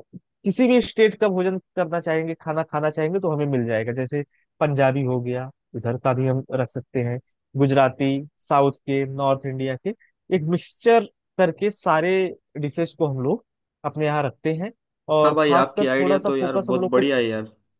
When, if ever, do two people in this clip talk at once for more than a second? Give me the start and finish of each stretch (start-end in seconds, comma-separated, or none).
15.2-17.0